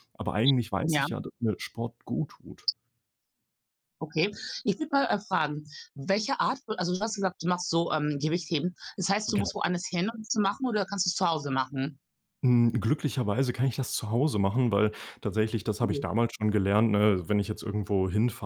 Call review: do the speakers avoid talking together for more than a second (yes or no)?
yes